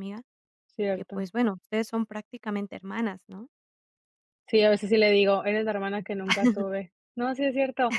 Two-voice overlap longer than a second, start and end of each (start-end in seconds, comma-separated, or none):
none